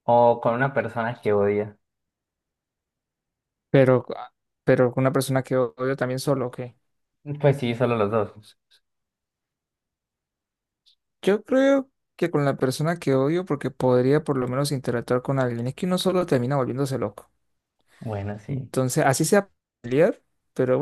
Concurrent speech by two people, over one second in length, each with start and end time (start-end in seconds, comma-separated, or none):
none